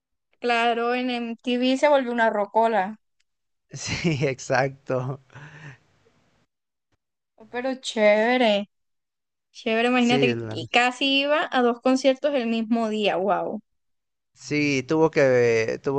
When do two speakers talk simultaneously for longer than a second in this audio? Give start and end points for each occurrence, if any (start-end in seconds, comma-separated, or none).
none